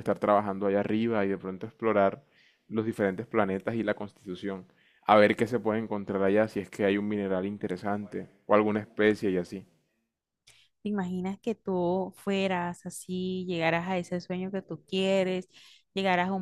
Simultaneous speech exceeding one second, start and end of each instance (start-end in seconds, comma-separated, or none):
none